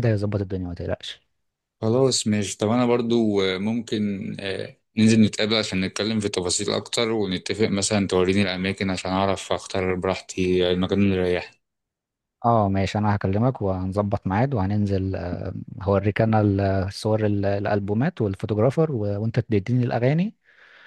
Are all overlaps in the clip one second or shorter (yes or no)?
yes